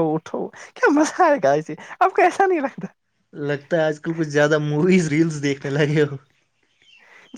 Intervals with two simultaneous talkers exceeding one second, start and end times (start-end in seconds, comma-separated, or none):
none